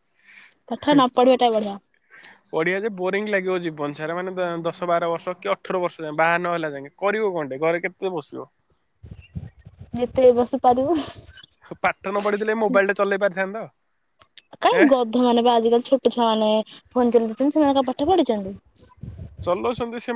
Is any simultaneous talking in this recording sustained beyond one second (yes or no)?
no